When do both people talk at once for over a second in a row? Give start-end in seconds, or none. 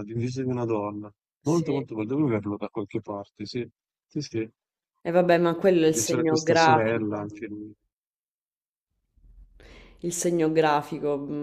5.8-7.3